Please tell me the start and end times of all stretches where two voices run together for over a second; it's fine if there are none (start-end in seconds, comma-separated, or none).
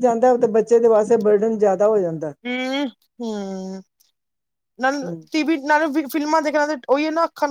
none